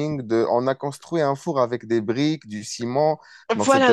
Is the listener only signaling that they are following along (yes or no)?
no